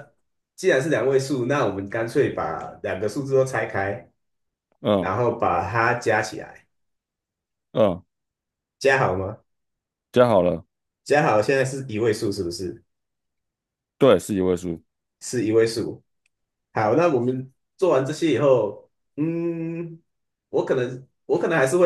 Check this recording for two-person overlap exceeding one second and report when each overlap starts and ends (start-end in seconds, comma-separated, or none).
none